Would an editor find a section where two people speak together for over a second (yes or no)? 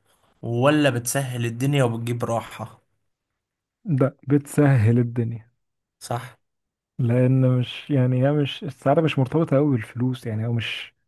no